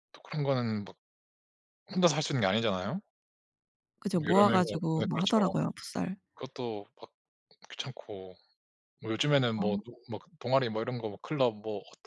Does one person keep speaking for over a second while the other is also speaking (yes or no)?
yes